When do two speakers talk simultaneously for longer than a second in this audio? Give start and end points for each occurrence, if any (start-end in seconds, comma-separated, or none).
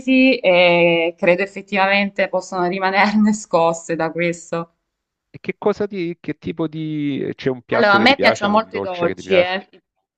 7.7-9.6